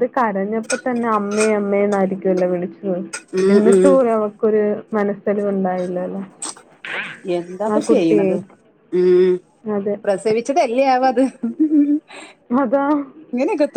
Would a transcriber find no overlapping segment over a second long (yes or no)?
yes